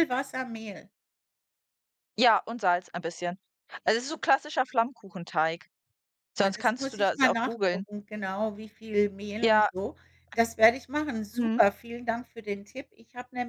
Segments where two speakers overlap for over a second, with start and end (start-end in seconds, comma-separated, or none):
6.4-7.8